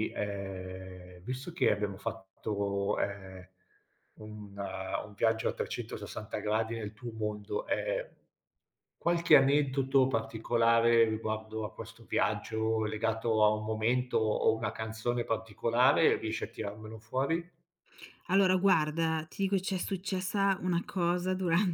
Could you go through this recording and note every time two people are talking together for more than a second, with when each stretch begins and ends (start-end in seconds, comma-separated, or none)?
none